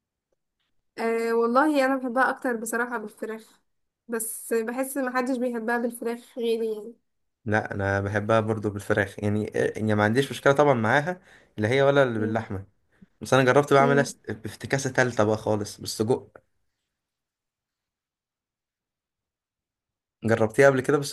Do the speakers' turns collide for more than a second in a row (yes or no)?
no